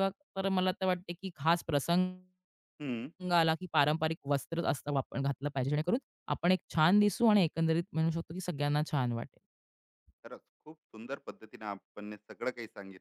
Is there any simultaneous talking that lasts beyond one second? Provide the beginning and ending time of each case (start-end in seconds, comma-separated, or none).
none